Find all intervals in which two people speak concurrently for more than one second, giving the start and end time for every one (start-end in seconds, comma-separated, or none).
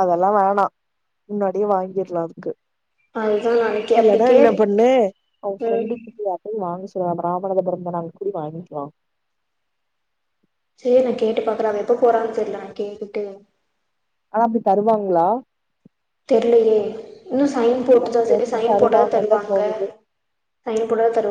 17.9-19.6